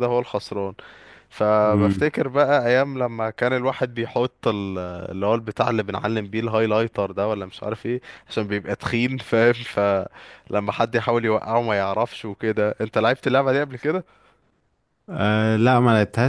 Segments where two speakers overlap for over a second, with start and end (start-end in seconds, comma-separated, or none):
none